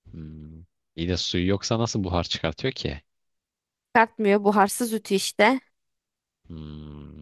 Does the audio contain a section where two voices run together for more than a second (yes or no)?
no